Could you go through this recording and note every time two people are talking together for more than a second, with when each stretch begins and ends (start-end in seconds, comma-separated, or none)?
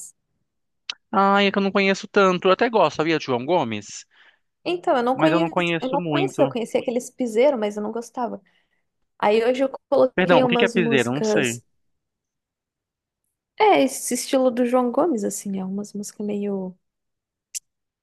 5.1-6.5, 10.2-11.6